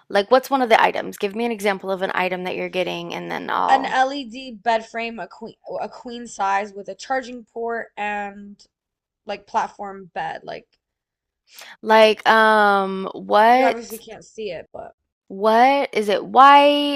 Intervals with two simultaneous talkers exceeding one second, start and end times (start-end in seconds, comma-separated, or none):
none